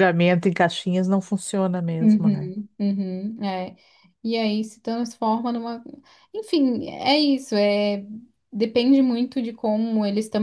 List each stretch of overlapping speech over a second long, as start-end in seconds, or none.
none